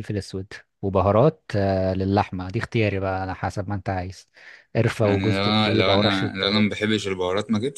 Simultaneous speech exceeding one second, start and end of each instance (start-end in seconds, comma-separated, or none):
5.0-6.8